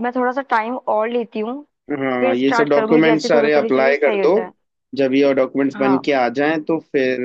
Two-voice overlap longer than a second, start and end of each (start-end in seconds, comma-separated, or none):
2.2-4.3